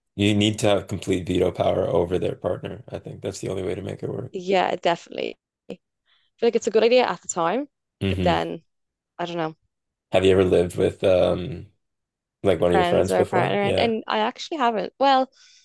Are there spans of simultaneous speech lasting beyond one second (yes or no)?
yes